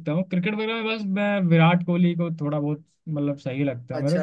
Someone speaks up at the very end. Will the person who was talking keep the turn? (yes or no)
no